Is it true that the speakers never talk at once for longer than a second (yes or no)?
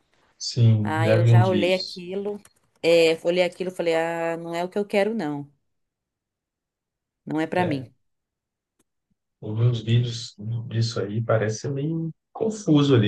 no